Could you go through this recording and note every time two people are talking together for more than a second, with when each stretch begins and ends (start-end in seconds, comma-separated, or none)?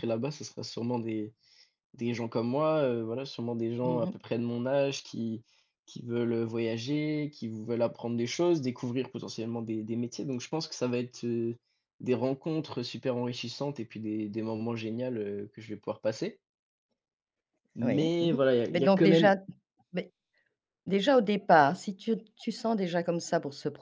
17.8-19.3